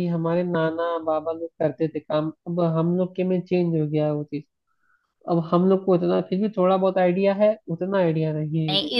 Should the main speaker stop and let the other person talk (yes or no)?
yes